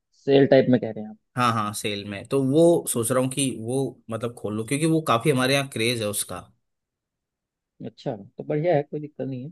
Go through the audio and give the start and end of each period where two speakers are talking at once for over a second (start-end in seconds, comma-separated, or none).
none